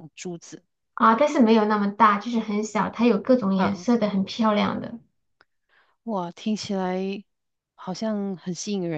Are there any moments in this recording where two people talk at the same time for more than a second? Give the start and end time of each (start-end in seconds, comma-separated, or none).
none